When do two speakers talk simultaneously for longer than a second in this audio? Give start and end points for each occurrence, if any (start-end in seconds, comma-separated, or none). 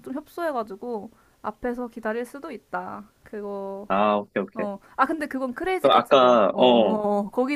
5.8-7.0